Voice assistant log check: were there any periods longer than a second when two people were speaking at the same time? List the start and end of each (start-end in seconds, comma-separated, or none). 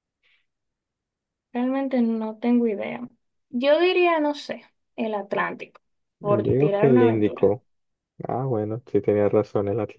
6.2-7.5